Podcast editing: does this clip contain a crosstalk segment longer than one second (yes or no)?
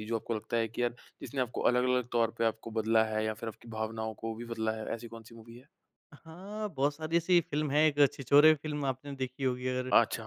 no